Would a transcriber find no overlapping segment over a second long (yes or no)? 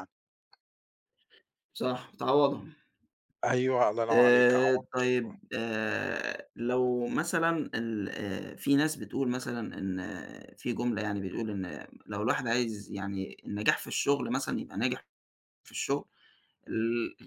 no